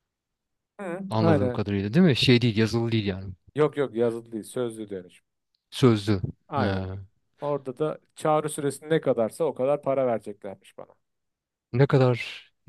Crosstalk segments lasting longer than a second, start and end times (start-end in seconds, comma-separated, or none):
none